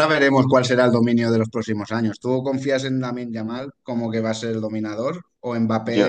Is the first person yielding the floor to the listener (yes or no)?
no